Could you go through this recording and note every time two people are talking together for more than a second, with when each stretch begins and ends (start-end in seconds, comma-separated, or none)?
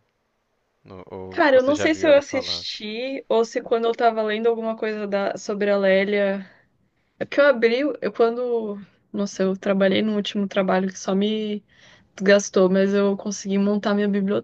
1.3-2.7